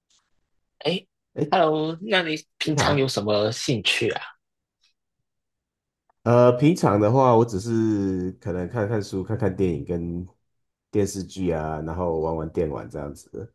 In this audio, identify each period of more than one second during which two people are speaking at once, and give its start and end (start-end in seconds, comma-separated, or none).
none